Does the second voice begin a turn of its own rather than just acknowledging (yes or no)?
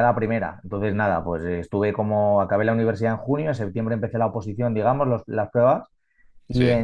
no